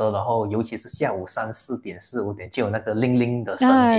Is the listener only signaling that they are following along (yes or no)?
no